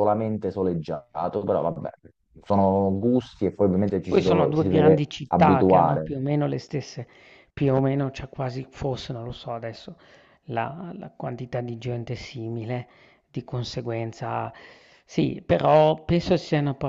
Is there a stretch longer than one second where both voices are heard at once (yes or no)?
yes